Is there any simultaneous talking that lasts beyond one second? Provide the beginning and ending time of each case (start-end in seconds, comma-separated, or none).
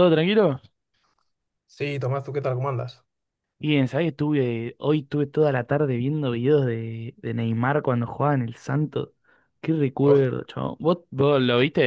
none